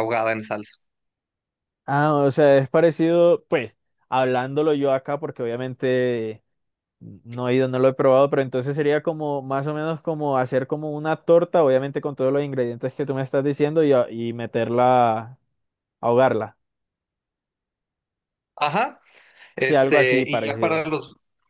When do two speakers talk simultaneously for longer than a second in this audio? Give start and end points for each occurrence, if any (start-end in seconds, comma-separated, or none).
19.6-20.8